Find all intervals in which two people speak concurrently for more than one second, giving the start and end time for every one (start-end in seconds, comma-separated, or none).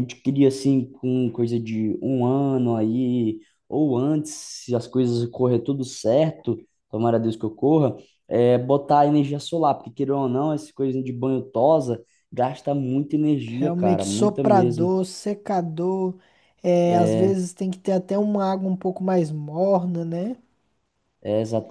13.6-14.9